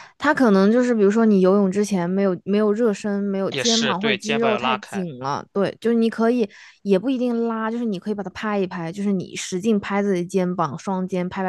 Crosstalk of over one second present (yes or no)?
yes